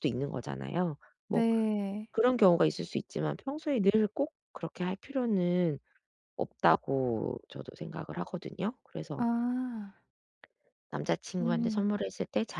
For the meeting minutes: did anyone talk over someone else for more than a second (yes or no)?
no